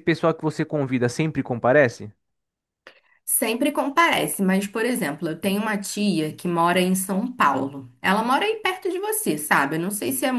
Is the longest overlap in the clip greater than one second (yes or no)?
no